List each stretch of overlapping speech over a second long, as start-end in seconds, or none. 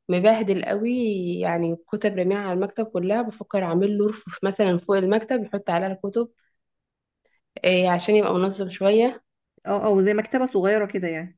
none